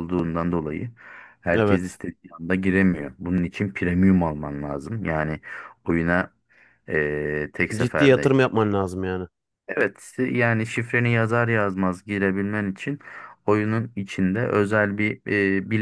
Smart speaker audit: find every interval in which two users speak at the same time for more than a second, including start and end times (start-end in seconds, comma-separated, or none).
none